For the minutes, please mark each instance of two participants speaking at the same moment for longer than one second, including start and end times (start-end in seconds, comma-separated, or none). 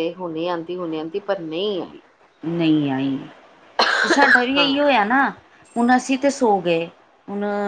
none